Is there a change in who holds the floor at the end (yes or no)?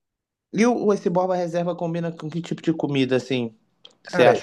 yes